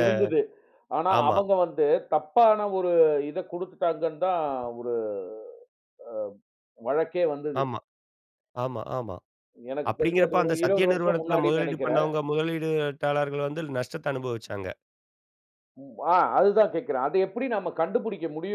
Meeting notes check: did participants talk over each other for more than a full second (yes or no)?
yes